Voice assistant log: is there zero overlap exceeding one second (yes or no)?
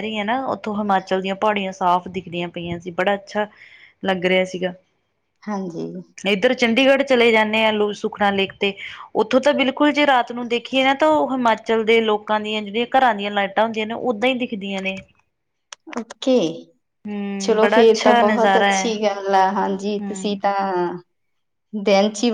no